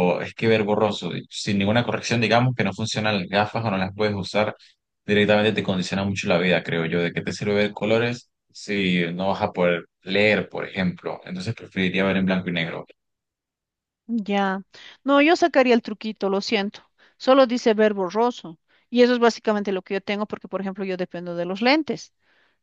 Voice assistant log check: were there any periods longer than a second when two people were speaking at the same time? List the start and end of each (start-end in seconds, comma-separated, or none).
none